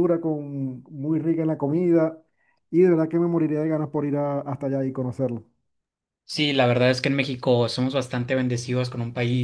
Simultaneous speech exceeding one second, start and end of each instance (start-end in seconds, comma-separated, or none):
none